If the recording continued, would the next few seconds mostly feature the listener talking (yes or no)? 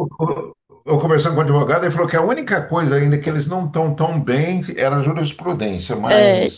yes